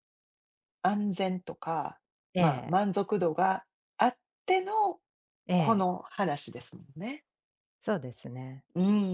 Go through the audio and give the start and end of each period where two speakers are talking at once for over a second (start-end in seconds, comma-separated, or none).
none